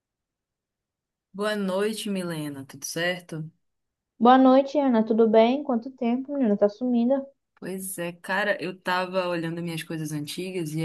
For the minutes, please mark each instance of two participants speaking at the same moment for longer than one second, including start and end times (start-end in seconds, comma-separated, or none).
none